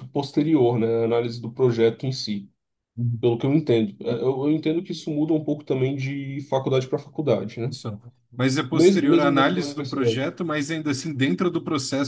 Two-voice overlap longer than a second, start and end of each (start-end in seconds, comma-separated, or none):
8.7-10.3